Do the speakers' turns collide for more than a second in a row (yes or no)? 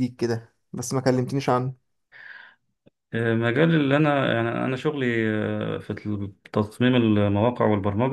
no